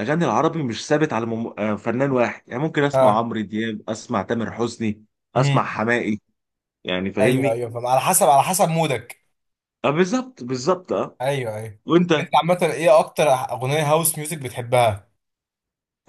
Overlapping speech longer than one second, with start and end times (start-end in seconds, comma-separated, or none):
none